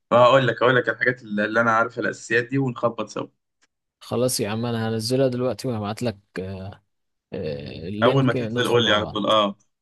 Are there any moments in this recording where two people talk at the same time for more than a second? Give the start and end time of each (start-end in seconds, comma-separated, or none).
8.0-9.3